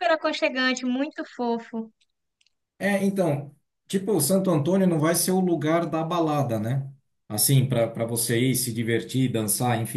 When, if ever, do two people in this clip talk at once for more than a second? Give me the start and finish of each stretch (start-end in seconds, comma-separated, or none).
none